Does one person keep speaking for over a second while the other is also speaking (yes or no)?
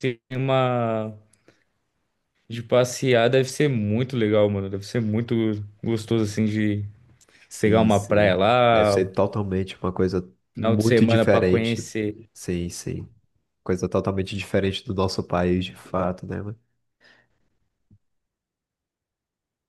yes